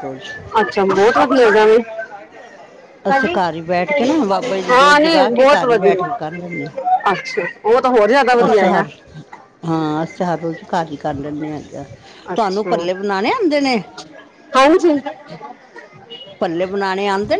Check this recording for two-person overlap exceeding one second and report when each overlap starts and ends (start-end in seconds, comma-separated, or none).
4.7-6.3